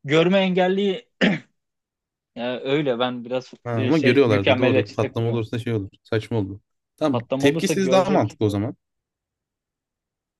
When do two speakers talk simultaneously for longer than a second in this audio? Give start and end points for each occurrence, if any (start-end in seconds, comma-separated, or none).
3.6-5.4, 7.1-8.4